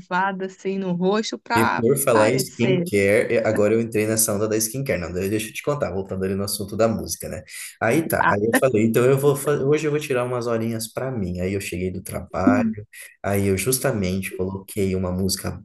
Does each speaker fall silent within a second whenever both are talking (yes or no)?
no